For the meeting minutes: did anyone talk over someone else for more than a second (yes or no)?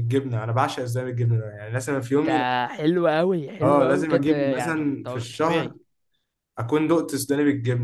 yes